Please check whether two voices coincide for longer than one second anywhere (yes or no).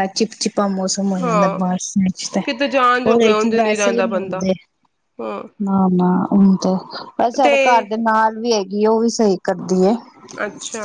yes